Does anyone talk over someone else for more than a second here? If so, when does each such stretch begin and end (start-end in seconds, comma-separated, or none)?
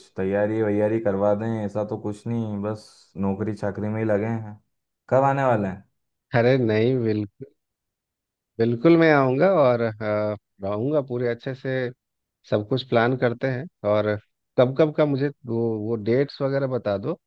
none